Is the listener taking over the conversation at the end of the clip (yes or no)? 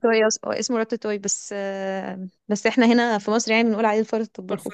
yes